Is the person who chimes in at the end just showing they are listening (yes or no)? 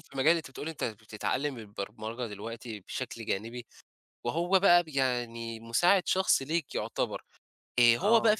yes